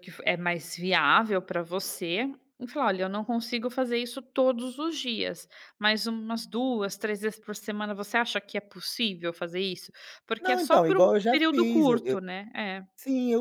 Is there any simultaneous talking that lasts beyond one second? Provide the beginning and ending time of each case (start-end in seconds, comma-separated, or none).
10.4-12.2